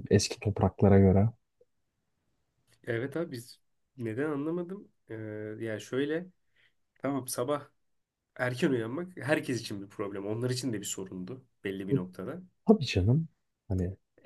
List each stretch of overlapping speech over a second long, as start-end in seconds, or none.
none